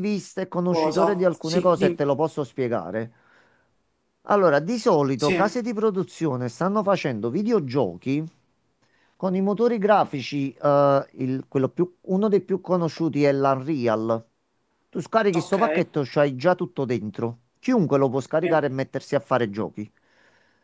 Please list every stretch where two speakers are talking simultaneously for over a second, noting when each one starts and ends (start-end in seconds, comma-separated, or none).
0.7-2.2